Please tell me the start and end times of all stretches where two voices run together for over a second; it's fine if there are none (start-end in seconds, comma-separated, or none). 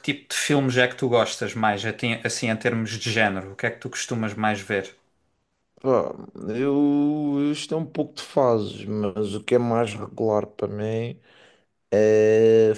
none